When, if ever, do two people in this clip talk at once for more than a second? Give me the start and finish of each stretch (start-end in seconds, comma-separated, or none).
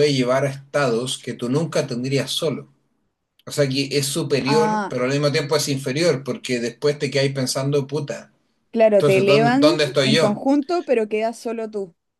8.9-10.4